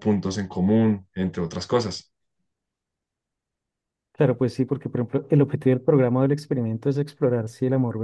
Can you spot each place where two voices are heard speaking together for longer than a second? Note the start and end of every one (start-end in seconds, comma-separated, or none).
none